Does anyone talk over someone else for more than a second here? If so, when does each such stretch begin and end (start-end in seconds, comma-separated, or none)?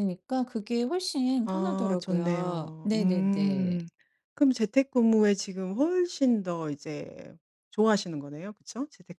1.4-3.8